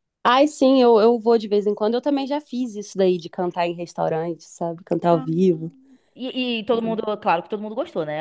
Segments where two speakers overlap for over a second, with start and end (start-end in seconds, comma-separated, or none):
none